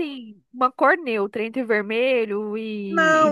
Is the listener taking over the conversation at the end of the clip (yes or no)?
yes